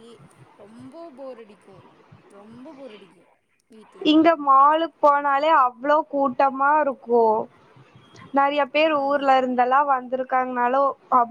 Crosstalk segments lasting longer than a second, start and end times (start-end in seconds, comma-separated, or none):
none